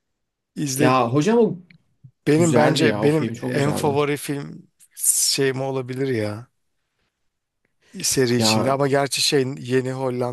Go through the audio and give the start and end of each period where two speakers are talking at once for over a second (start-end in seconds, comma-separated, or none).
2.3-4.0